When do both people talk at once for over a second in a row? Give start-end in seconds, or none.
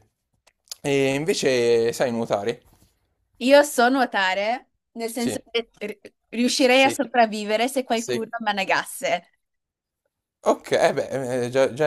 none